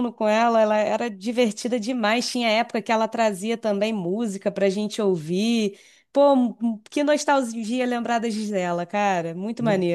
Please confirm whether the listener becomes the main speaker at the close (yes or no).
yes